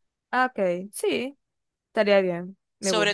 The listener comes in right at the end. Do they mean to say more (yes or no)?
yes